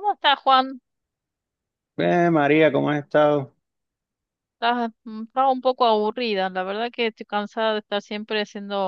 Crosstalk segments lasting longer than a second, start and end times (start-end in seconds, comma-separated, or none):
none